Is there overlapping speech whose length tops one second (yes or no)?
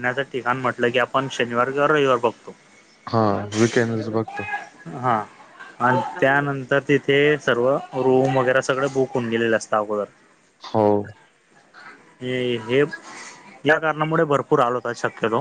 no